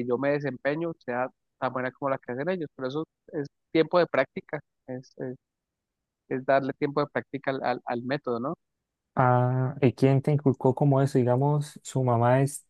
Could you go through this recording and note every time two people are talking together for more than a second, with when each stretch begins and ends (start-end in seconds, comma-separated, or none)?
none